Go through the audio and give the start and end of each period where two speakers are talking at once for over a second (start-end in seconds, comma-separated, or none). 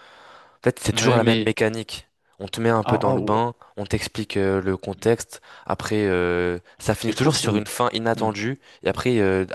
none